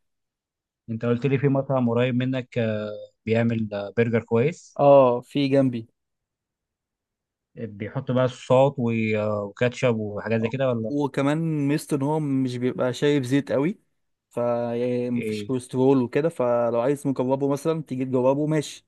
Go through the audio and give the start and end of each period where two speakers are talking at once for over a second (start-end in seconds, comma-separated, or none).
none